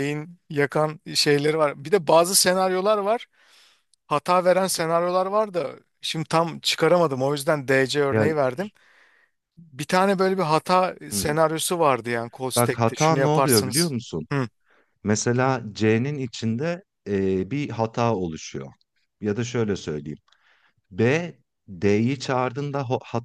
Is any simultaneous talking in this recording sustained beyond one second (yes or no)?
yes